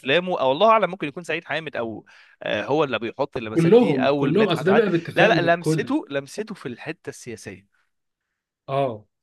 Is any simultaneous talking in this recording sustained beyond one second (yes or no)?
yes